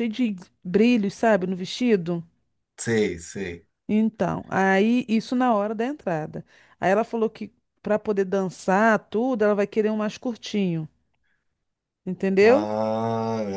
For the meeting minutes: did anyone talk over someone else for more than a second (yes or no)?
no